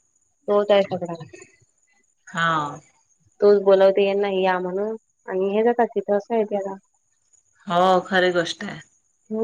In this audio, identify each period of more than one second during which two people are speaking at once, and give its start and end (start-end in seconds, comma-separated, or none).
none